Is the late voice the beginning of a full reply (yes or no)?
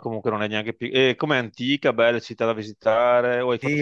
yes